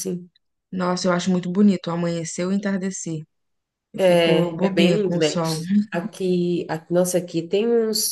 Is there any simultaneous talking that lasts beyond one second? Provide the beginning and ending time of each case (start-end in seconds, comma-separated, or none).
4.0-5.4